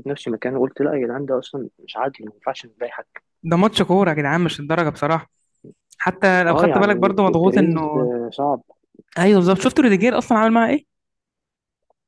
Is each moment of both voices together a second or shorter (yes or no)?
no